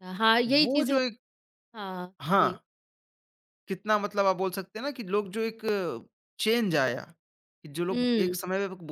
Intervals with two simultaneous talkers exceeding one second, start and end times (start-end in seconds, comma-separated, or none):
none